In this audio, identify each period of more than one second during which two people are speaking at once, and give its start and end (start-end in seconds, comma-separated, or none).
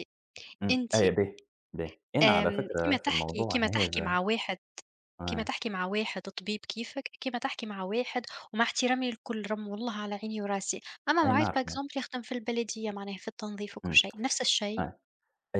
2.2-4.2